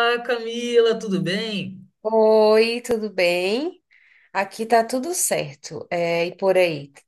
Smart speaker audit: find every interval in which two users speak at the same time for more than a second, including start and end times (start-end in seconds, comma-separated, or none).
none